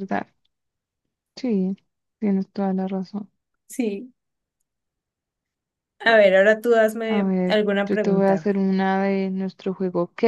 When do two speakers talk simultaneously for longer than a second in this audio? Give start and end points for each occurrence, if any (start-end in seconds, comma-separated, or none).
7.0-8.5